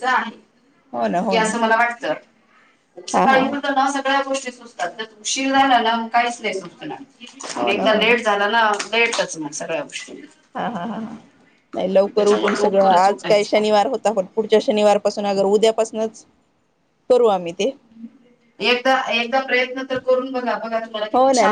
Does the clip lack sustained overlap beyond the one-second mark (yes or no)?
no